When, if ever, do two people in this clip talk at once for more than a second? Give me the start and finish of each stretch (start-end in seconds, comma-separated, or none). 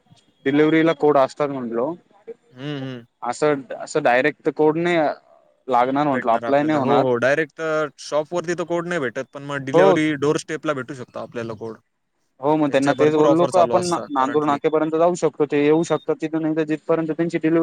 12.7-14.6